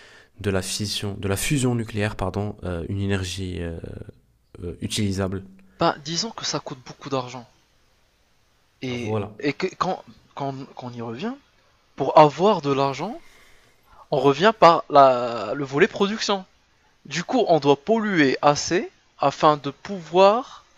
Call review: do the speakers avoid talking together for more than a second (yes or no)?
yes